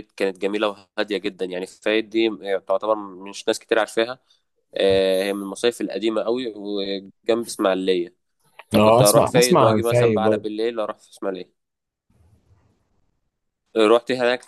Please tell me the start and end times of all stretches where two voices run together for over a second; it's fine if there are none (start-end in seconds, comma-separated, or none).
8.7-10.5